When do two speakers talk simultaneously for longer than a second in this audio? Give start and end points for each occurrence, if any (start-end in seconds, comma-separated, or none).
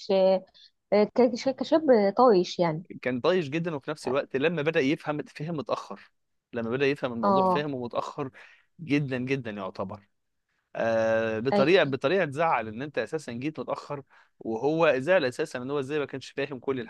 none